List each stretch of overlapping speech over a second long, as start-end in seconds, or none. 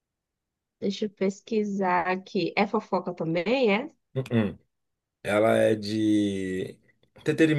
none